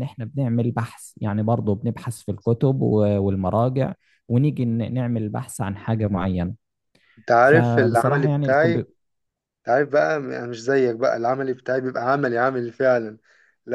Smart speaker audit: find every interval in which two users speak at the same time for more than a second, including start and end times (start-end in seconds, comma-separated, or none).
7.5-8.8